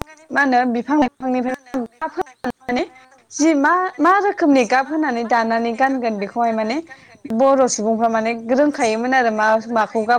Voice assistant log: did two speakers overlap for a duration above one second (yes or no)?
yes